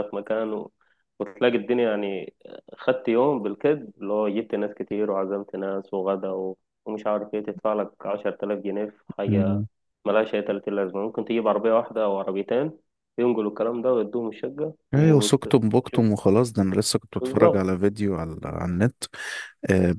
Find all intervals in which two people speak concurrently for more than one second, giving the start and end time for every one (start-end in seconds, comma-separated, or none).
none